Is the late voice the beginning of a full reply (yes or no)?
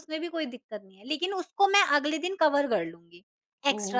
yes